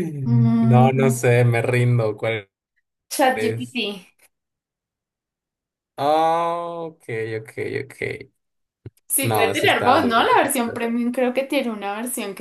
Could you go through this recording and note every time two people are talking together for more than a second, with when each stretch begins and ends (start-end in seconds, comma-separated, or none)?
9.2-10.5